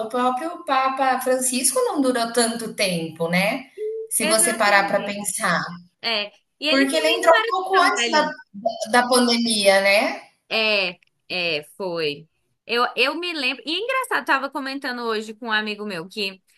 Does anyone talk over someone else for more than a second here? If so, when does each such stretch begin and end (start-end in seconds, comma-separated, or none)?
4.2-5.6, 6.7-8.3